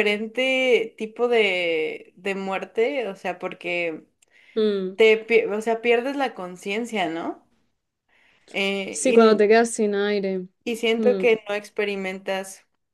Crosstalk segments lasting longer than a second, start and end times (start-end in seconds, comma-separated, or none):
none